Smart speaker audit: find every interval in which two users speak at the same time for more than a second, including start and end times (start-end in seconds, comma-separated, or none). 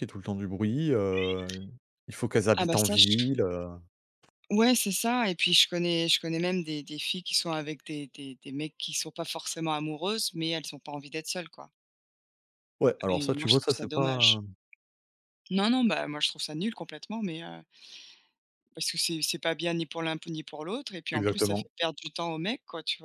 13.1-14.4